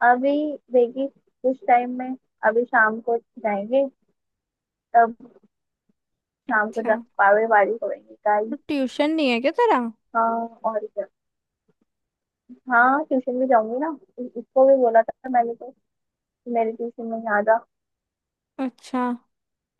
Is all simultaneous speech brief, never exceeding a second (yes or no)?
yes